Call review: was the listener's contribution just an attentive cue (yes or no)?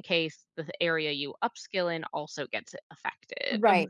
no